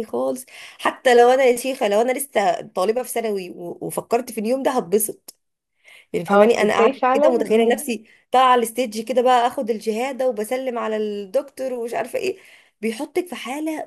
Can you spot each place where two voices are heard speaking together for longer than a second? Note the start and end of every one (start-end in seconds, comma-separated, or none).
6.3-7.8